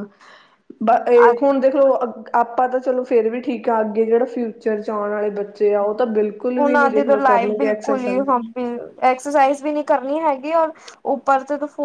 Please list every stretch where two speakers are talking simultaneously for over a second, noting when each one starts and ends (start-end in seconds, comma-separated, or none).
6.5-8.2